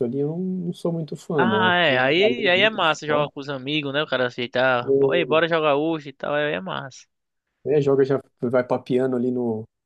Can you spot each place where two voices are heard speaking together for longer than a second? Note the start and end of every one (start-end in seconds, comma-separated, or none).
1.4-3.3